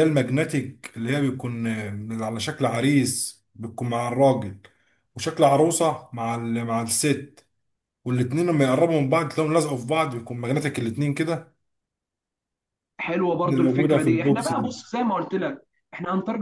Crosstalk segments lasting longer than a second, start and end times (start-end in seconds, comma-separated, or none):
13.5-14.7